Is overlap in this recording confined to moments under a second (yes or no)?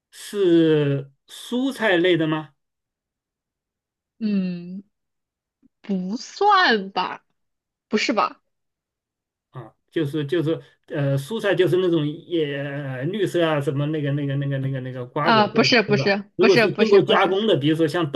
no